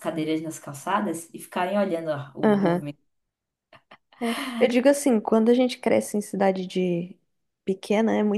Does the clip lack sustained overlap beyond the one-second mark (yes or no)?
yes